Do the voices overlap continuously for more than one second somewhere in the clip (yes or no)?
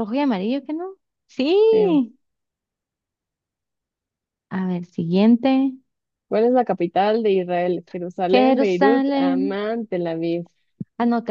yes